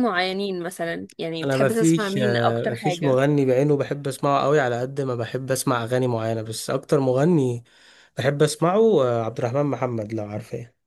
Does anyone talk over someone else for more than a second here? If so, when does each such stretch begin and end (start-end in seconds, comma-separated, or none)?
1.4-3.2